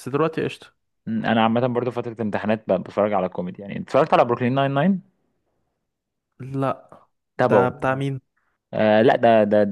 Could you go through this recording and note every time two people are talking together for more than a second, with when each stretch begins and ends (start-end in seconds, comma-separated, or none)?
none